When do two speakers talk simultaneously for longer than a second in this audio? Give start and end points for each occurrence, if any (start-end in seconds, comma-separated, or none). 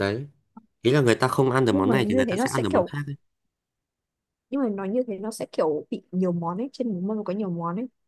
1.7-2.9